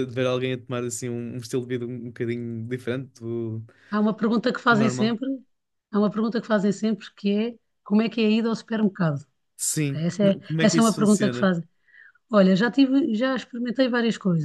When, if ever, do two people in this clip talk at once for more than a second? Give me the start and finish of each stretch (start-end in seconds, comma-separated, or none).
9.9-11.5